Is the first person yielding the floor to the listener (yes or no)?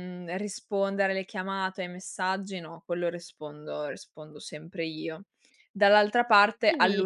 no